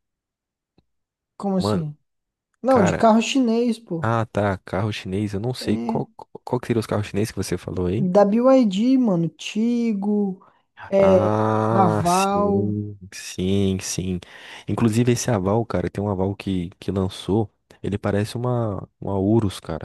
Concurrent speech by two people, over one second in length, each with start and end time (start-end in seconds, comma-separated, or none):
11.0-12.8